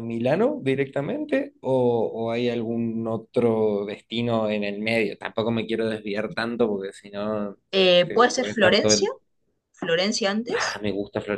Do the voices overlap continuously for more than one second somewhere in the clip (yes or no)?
yes